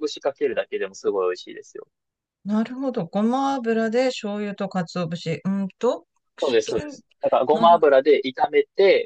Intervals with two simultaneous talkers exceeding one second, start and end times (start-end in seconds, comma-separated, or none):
none